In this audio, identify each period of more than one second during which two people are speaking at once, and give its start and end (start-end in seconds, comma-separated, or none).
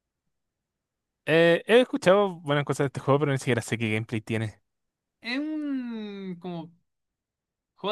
none